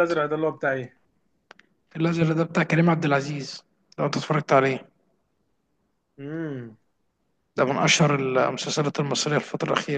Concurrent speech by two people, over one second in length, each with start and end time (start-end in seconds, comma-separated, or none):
none